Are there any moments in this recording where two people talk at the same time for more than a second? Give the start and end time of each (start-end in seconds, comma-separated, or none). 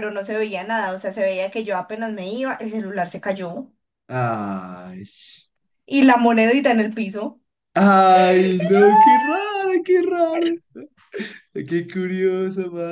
none